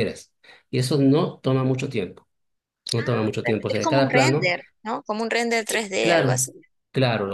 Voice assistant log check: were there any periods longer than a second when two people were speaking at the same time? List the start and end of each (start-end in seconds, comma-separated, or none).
3.0-4.5